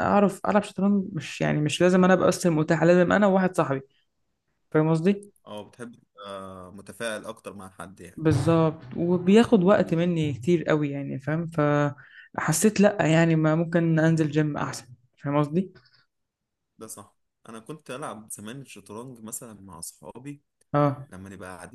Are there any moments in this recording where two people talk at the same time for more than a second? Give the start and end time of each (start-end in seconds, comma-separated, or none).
none